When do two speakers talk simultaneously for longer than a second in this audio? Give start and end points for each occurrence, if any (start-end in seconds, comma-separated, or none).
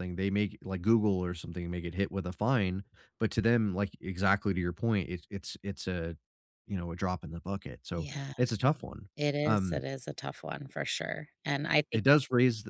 none